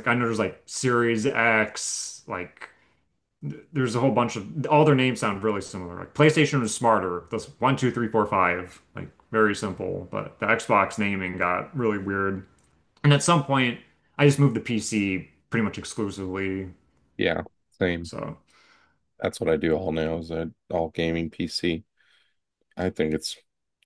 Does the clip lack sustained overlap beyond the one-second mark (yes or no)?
yes